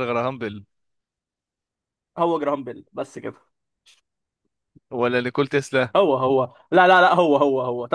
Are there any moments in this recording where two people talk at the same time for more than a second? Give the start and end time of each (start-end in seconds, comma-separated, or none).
none